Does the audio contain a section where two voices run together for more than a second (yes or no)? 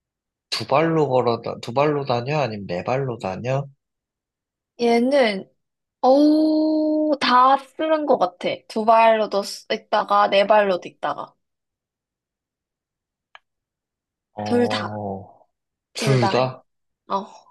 no